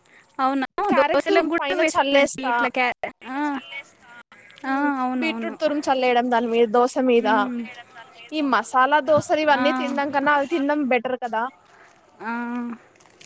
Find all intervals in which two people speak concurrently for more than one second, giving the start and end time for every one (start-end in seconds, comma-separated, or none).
0.9-2.5